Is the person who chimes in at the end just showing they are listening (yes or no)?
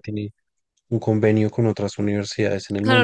no